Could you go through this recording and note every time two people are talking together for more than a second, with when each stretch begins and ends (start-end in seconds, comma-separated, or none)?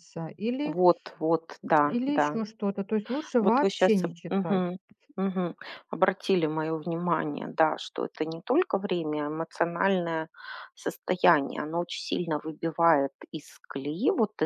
none